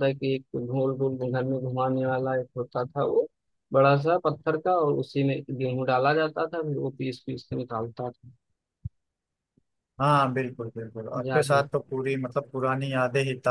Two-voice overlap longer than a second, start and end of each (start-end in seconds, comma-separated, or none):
none